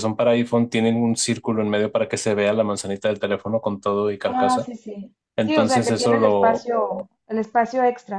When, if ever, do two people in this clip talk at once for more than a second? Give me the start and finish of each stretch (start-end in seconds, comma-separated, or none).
5.4-6.7